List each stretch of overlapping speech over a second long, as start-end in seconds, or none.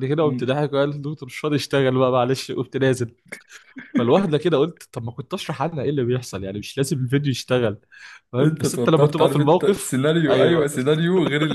8.4-10.8